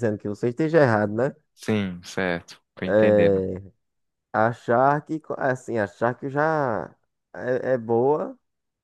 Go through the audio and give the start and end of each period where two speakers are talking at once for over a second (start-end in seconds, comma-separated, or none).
none